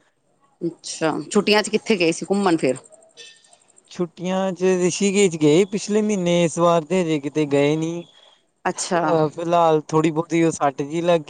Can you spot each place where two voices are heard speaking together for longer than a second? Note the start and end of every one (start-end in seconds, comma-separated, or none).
none